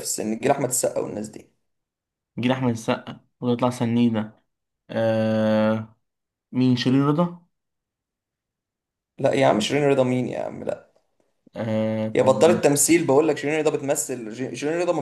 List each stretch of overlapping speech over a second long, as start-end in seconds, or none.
none